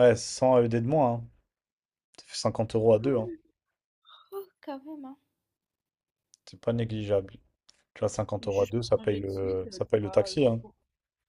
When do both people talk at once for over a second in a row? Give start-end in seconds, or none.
8.4-10.6